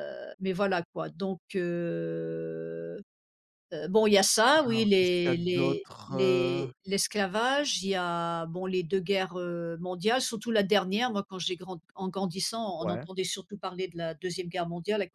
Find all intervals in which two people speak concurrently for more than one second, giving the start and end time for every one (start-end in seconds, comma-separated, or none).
4.6-6.7